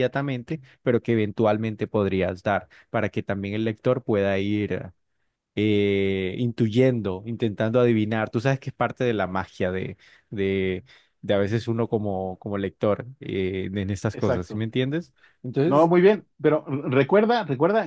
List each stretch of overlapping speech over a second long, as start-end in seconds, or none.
none